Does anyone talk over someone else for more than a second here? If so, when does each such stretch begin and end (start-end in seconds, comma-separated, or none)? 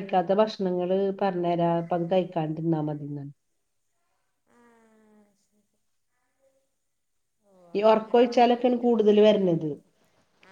7.8-9.4